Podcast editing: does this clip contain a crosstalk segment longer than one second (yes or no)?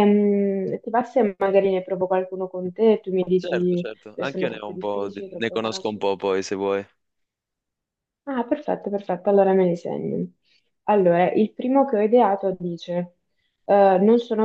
yes